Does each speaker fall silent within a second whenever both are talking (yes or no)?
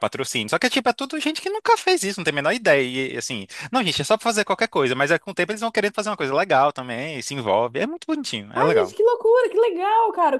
yes